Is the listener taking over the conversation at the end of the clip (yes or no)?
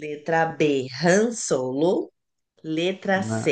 no